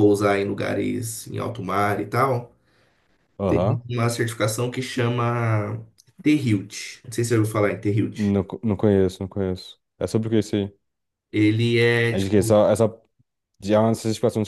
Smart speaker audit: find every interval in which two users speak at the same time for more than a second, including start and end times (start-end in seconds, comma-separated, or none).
none